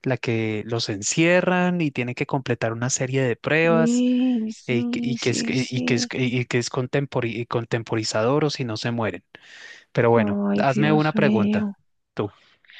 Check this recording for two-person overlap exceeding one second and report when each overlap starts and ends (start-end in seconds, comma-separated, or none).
4.7-6.1, 10.2-11.7